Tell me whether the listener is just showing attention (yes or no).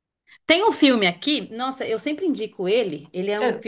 yes